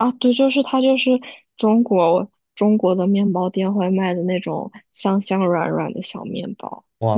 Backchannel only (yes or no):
yes